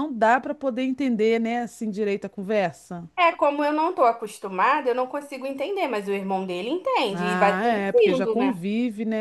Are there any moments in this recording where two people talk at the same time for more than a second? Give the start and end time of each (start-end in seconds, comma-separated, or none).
7.1-8.6